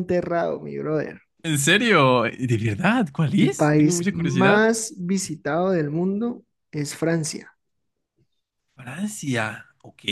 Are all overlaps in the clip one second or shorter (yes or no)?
no